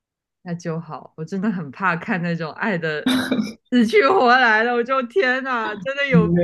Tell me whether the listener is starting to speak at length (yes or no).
yes